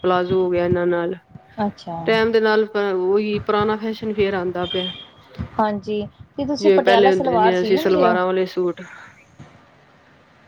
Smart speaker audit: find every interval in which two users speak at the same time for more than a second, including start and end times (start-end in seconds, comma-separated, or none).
6.6-8.2